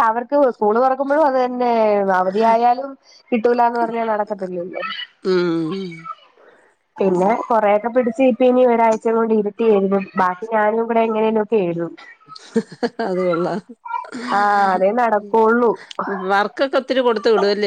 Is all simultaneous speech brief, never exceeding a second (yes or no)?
yes